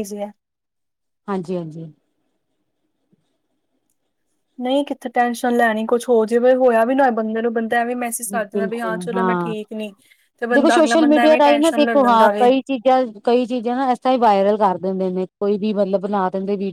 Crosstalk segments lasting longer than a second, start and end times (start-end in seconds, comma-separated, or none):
10.5-12.5